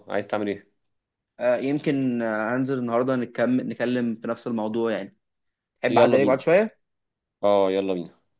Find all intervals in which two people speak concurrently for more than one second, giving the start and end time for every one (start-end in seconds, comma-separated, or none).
none